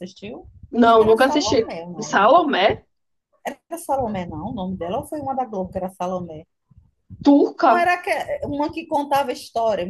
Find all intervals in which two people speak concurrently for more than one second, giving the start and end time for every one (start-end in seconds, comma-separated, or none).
0.7-2.3